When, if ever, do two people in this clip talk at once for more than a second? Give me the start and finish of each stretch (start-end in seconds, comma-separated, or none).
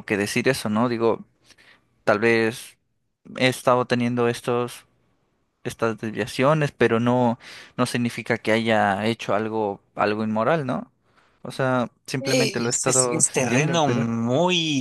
12.2-14.1